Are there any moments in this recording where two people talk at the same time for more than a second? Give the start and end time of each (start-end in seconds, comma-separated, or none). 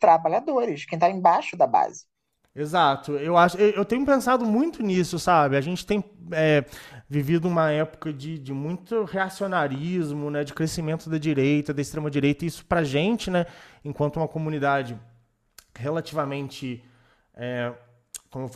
none